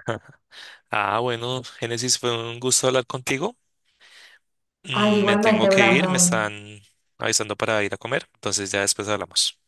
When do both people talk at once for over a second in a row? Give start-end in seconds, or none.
4.9-6.5